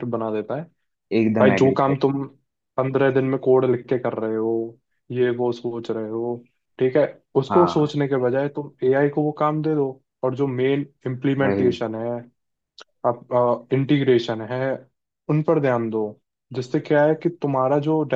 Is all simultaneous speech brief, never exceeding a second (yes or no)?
yes